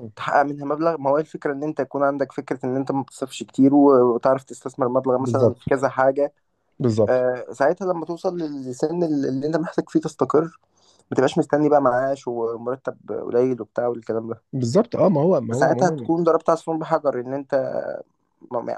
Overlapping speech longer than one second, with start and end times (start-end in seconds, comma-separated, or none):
none